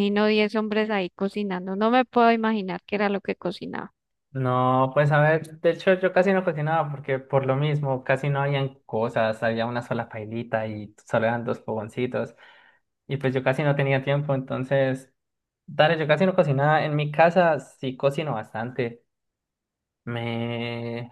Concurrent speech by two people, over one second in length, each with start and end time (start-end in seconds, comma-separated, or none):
none